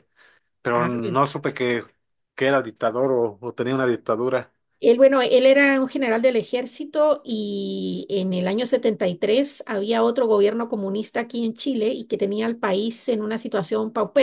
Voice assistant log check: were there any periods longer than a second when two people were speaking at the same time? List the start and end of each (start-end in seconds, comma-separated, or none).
none